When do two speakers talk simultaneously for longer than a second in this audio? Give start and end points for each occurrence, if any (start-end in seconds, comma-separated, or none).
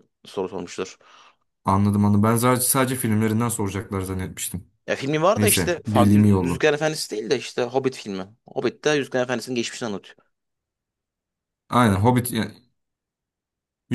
5.4-6.7